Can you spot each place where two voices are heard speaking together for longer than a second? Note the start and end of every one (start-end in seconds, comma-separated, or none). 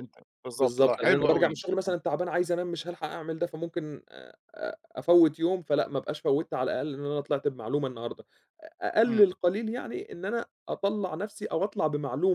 0.5-1.9